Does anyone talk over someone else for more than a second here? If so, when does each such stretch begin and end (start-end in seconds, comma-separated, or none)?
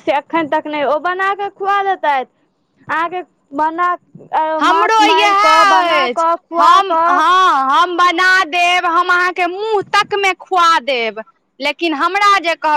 4.7-7.2